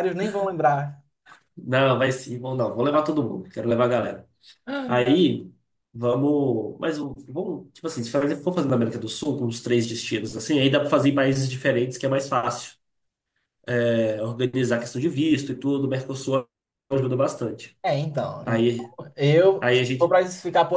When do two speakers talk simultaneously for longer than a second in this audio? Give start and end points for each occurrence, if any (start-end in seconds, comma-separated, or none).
none